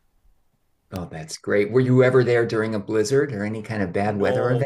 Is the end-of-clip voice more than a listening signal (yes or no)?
yes